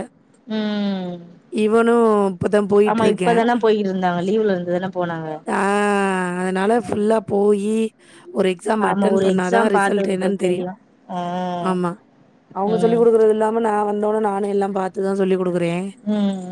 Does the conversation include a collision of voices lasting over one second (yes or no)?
yes